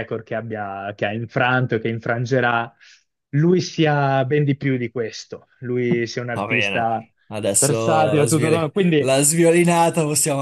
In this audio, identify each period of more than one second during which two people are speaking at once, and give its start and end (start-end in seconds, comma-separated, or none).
7.6-9.2